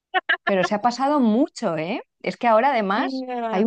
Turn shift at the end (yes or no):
no